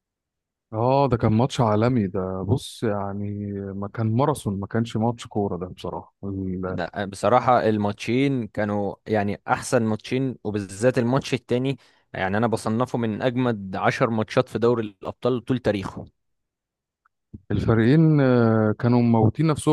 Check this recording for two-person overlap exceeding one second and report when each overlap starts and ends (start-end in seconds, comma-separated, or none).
none